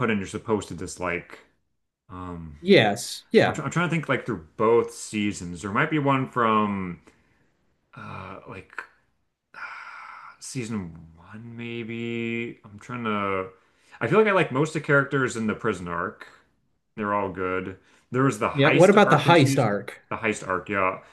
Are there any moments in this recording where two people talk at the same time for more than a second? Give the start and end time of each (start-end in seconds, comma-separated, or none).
18.5-19.7